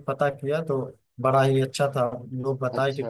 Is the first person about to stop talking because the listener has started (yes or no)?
no